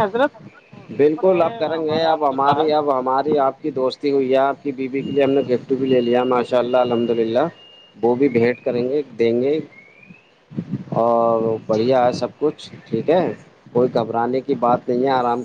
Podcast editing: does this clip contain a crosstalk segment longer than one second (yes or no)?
yes